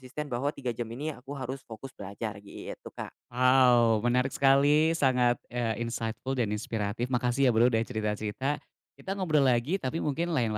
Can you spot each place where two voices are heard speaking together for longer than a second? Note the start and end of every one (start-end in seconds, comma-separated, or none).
none